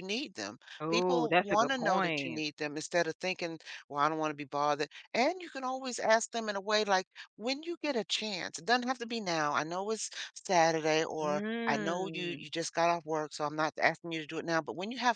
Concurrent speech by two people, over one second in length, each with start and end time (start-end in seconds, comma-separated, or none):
0.8-2.4, 11.2-12.5